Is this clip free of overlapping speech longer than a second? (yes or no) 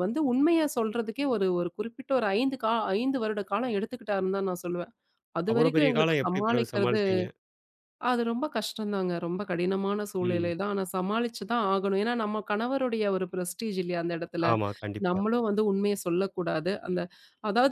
no